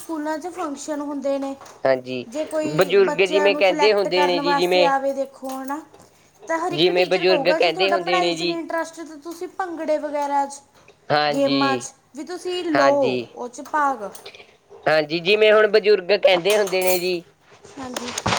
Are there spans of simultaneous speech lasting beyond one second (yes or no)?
yes